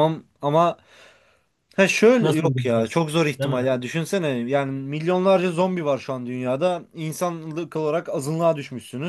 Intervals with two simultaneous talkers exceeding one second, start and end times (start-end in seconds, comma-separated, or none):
2.2-3.7